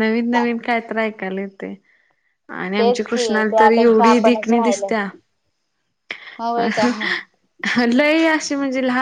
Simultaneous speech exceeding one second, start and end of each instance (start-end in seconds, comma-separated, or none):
2.8-4.9